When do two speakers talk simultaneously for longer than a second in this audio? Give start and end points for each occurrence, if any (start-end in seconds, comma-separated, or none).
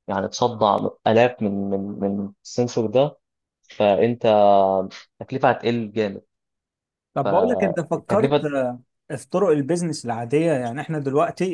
7.2-8.4